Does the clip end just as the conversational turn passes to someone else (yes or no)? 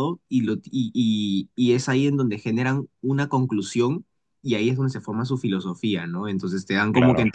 no